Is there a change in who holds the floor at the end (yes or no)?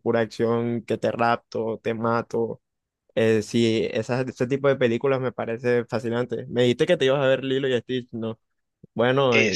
yes